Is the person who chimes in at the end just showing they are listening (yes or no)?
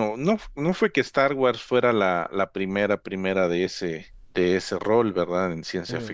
yes